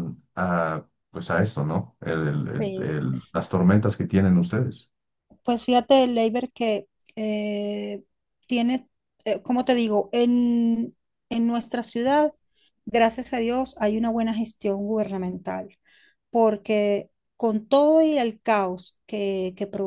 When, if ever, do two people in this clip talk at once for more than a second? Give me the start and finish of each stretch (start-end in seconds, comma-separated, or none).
none